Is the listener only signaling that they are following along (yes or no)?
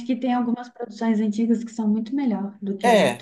no